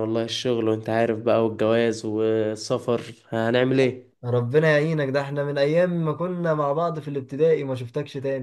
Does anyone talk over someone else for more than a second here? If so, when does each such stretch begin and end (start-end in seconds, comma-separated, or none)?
none